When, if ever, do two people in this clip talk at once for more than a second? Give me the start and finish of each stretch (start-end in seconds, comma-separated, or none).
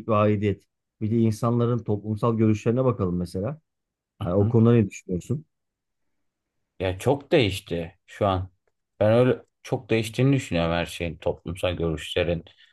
none